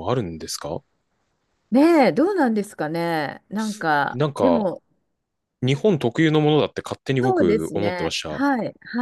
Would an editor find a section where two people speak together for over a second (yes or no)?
yes